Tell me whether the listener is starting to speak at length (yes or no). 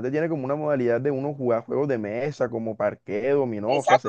yes